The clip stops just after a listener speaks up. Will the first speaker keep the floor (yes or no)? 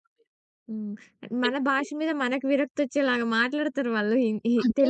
no